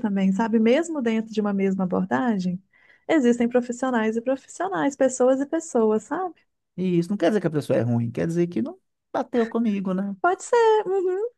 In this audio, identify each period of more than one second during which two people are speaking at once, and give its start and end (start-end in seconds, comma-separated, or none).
none